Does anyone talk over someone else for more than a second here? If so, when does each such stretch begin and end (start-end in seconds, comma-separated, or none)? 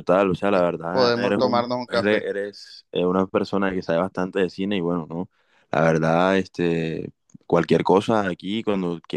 0.5-2.3